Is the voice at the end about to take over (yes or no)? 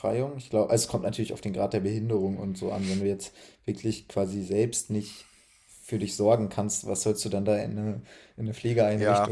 yes